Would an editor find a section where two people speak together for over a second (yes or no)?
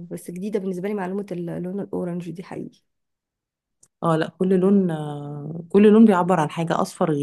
no